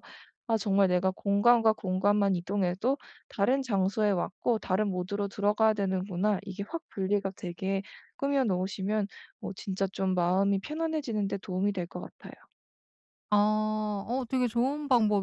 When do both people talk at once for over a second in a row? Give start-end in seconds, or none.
none